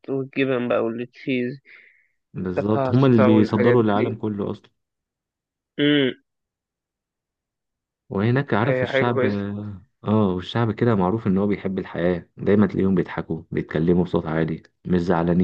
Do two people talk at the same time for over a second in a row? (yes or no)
yes